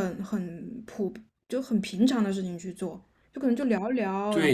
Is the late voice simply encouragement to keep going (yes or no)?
no